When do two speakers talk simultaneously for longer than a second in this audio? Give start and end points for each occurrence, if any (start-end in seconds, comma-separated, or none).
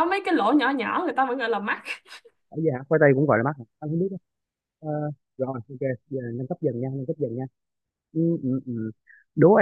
none